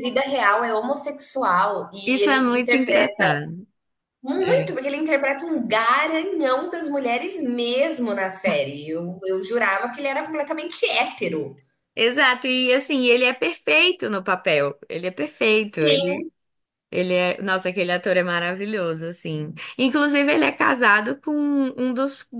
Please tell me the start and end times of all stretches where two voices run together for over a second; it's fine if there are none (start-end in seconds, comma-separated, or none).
2.0-3.3